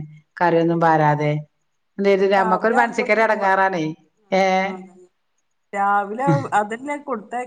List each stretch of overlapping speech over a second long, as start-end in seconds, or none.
2.3-3.7